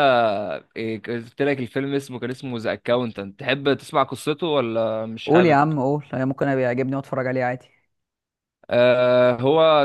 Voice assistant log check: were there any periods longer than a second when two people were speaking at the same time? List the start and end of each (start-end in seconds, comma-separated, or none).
none